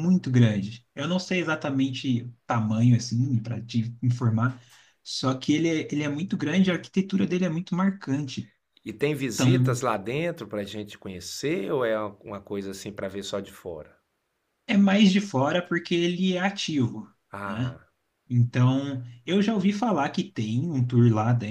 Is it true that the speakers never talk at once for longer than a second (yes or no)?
yes